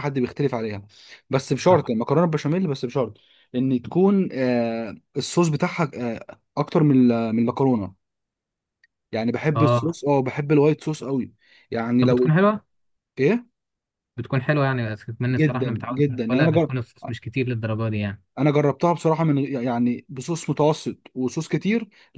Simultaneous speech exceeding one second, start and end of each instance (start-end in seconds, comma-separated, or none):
15.3-16.8